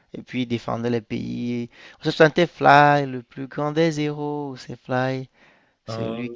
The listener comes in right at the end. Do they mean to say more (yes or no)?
no